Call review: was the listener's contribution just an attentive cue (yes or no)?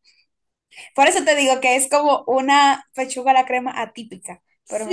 no